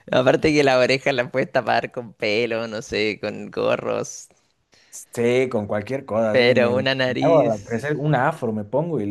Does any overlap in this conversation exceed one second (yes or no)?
yes